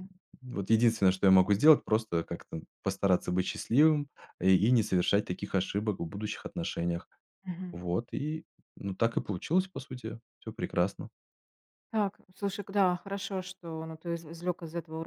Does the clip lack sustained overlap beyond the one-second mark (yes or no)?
yes